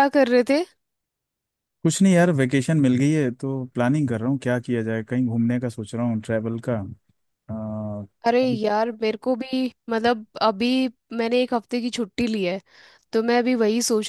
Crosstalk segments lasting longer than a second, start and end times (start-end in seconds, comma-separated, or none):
none